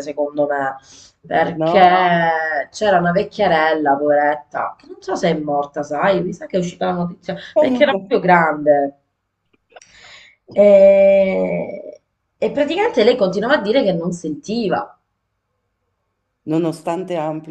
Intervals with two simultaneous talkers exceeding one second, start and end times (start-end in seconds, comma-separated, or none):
none